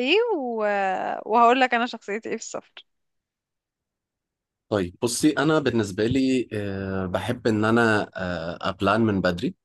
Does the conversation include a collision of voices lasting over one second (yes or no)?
no